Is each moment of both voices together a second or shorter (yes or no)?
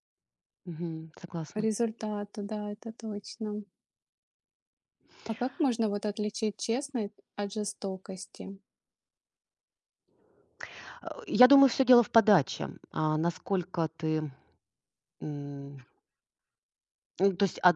yes